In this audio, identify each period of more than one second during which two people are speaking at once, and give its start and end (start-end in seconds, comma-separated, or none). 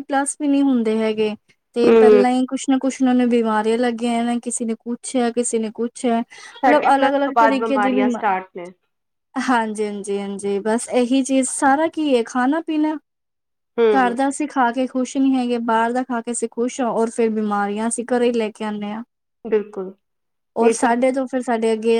6.6-8.3